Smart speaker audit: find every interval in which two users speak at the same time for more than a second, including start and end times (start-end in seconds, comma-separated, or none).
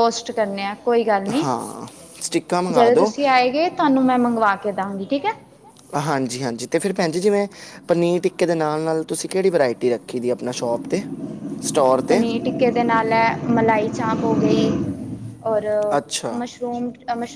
none